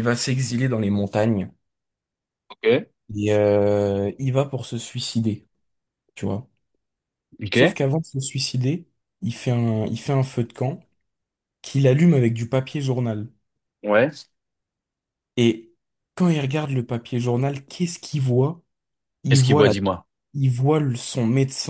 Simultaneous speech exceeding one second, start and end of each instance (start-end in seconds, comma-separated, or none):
none